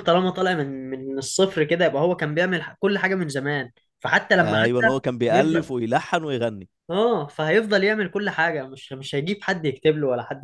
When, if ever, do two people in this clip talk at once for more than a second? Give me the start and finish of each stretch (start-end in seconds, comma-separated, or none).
4.4-5.8